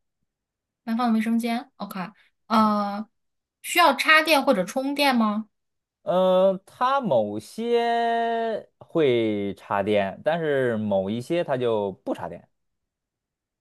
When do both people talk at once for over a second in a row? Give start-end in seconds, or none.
none